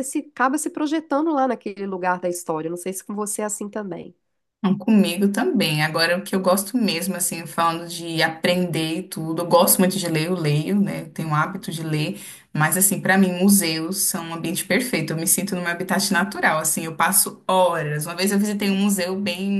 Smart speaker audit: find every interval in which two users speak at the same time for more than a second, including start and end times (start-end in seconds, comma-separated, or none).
none